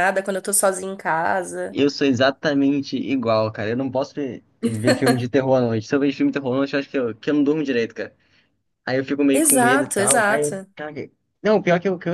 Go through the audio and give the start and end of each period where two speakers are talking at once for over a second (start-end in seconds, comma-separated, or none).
9.3-10.7